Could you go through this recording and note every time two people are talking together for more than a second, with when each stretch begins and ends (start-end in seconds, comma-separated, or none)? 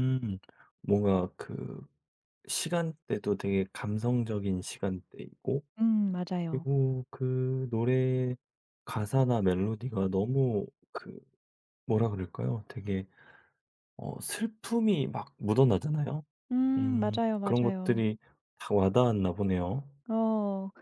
16.8-18.0